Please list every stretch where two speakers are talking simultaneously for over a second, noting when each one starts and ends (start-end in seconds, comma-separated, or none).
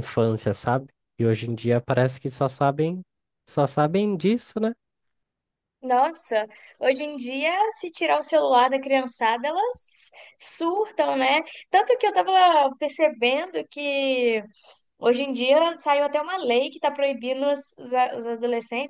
none